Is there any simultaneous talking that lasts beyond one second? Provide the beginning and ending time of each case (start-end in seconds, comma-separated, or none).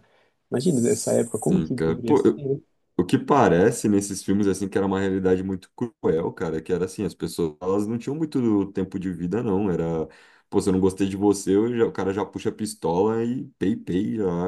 0.5-2.5